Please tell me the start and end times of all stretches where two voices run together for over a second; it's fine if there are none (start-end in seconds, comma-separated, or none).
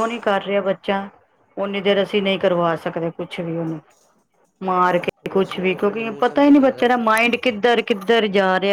5.2-7.1